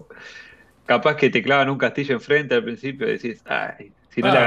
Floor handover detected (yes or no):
no